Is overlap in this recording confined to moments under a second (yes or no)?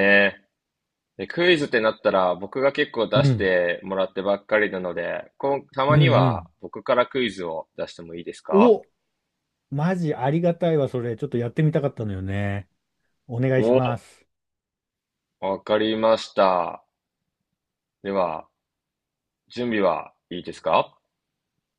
yes